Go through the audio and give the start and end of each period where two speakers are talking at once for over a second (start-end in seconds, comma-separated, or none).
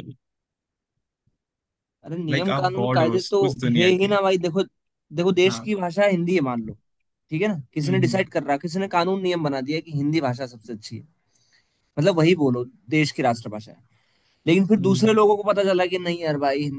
2.3-4.1